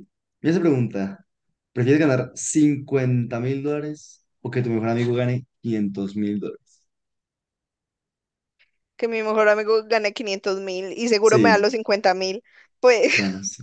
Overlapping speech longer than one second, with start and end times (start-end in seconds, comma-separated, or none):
none